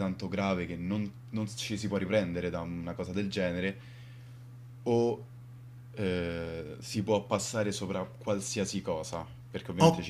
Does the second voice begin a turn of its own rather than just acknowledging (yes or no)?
no